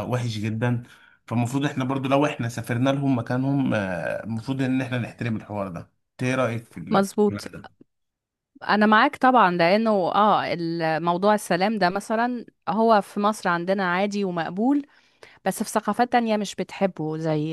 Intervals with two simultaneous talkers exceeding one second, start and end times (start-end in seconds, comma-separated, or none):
none